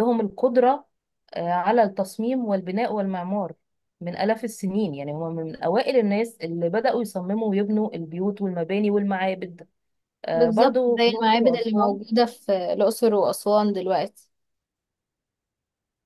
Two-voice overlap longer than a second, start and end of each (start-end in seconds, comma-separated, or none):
10.3-12.0